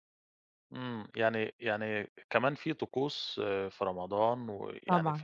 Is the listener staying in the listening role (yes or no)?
yes